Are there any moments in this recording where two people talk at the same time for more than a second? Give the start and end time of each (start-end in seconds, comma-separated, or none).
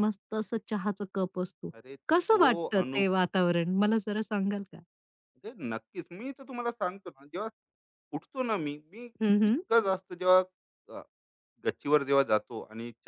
none